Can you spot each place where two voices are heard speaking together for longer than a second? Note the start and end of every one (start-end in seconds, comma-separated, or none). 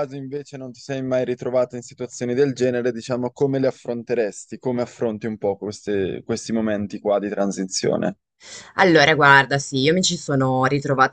none